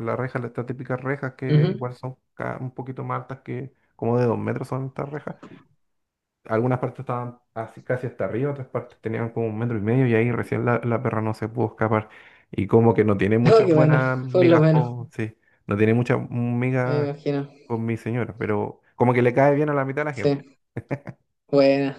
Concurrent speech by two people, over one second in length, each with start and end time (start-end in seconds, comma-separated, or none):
13.4-14.9